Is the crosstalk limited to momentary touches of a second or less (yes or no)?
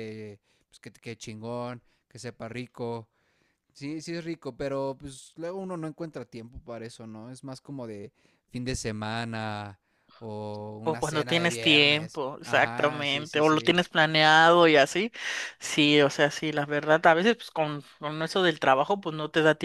no